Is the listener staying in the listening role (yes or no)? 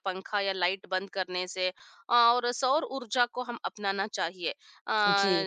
yes